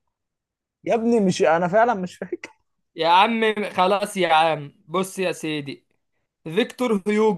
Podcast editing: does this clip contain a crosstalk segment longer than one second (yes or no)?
no